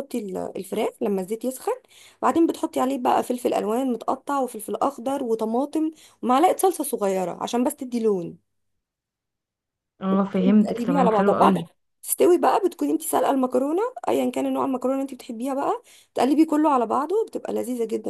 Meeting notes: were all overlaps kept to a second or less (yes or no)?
no